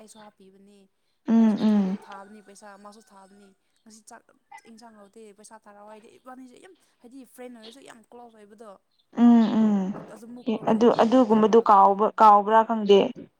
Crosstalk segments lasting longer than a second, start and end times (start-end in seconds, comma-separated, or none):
10.5-12.4